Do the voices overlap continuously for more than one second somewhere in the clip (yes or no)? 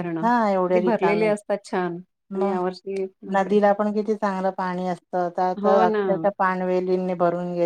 no